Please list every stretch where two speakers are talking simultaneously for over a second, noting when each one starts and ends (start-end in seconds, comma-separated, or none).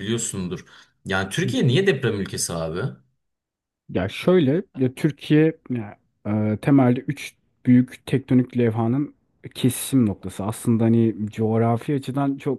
none